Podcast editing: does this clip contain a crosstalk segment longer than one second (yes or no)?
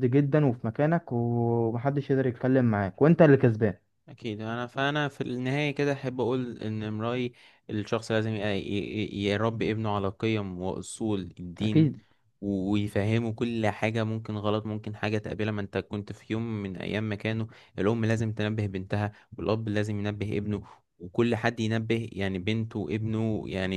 no